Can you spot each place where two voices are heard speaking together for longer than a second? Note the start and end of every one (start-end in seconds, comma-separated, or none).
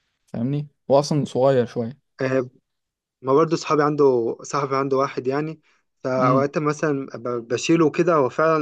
none